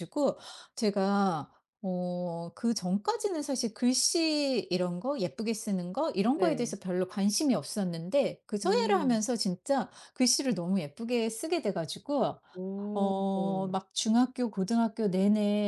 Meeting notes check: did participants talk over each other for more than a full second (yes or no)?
no